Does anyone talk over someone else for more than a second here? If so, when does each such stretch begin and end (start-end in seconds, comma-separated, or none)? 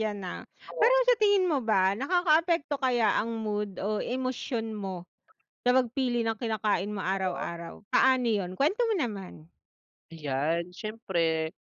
none